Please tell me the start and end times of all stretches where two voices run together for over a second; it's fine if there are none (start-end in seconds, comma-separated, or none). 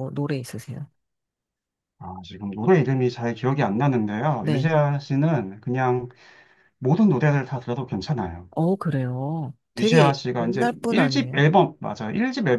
9.8-11.4